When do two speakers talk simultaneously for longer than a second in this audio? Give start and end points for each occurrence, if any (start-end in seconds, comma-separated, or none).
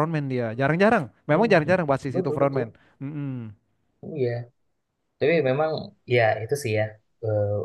1.3-2.7